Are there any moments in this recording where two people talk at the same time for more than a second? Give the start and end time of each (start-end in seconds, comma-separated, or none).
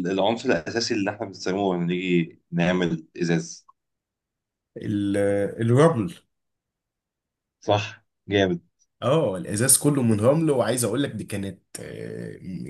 none